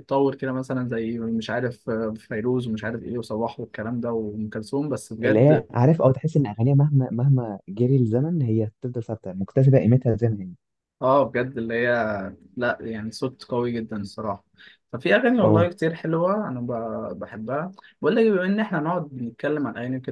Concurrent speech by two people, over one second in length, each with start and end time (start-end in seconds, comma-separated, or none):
none